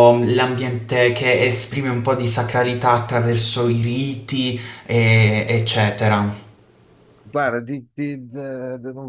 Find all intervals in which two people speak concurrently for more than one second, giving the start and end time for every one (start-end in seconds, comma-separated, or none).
none